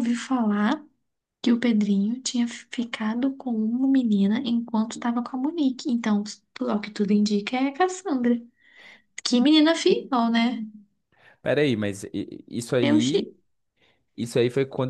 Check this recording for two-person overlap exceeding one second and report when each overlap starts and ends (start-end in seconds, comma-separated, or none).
none